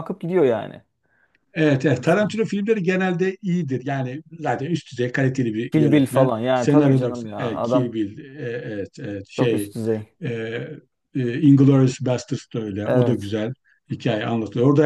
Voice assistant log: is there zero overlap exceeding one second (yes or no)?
no